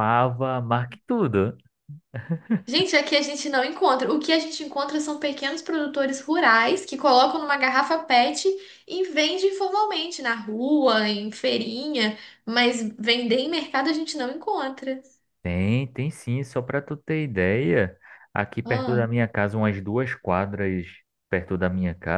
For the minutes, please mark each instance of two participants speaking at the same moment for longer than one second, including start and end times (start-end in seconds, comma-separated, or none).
none